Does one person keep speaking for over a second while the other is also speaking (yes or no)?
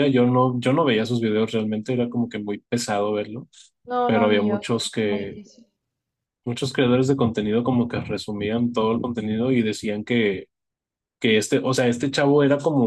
yes